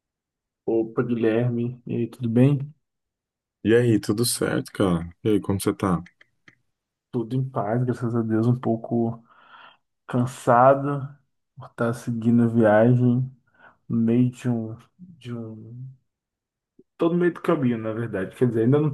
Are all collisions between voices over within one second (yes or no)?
yes